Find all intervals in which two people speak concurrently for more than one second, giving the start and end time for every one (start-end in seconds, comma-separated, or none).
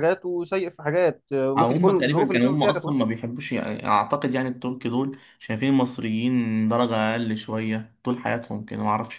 1.6-3.0